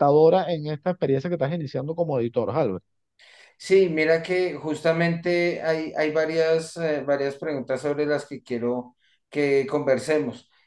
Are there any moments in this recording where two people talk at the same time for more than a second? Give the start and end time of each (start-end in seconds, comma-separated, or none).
none